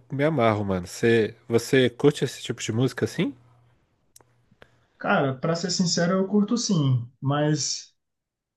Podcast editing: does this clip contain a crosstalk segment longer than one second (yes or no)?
no